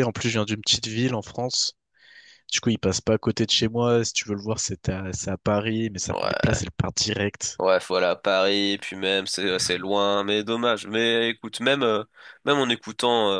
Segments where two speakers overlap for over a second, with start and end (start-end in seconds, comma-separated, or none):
none